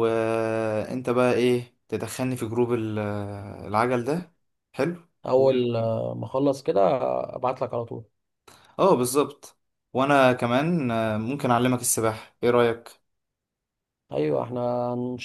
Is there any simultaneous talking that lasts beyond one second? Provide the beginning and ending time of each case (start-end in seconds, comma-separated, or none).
none